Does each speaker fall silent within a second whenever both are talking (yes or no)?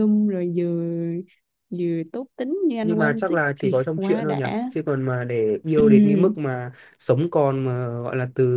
no